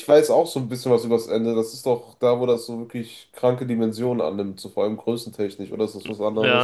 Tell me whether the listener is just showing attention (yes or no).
no